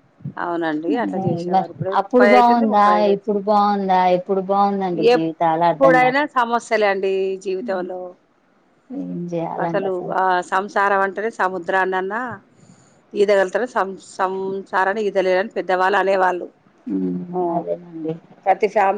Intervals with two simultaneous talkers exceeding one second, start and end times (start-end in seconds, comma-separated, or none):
1.1-3.4